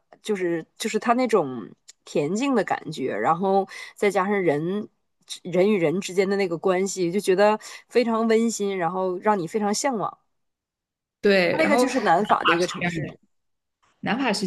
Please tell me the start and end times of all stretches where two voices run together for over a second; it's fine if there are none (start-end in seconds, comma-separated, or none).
11.5-13.0